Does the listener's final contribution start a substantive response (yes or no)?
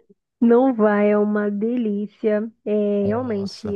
no